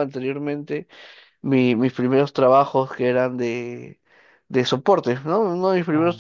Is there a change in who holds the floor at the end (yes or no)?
no